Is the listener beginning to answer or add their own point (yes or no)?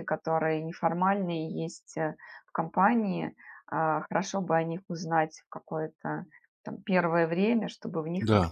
no